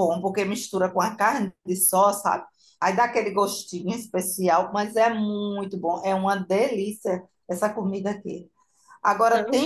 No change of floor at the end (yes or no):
yes